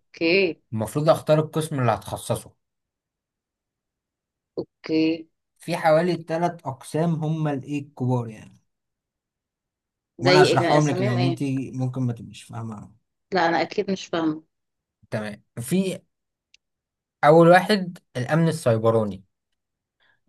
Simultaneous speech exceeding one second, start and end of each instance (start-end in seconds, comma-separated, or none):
10.2-11.4